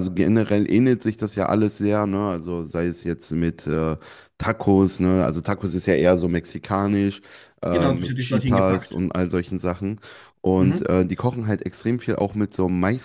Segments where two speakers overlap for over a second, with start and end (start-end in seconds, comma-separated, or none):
7.6-9.0